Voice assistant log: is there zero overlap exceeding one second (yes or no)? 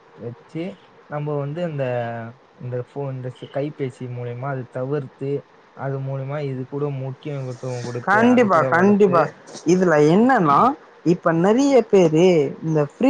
yes